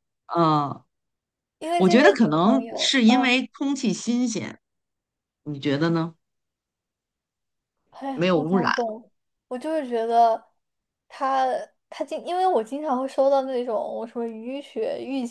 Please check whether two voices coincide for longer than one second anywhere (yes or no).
yes